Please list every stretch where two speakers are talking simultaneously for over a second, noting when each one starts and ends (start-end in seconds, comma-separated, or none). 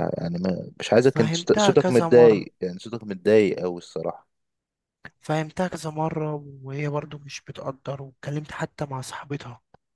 1.0-2.4